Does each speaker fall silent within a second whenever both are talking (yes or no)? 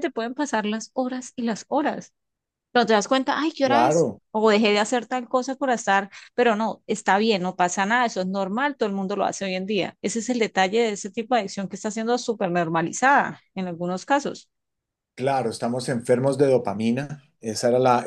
yes